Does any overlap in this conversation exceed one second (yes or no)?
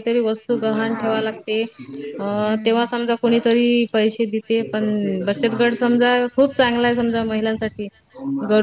yes